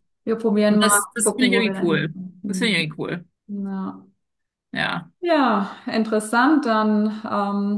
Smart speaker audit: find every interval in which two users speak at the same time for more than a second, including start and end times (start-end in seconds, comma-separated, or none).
0.7-2.9